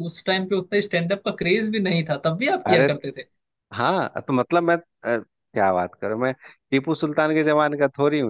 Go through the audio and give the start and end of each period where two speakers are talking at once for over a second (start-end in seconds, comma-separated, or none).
none